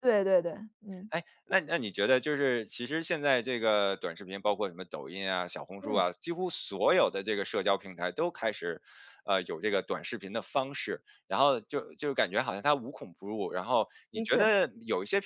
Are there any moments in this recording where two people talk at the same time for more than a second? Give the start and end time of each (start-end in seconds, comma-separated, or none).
none